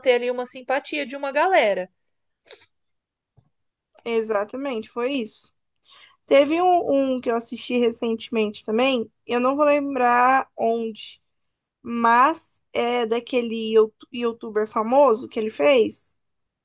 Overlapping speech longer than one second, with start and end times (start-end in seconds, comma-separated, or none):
none